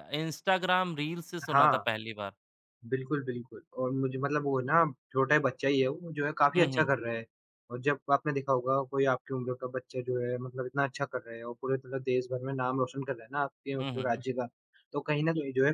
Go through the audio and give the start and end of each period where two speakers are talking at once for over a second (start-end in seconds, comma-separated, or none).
none